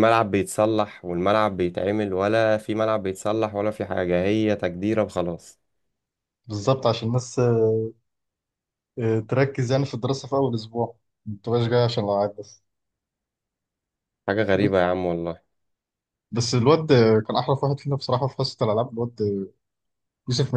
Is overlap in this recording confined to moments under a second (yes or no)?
yes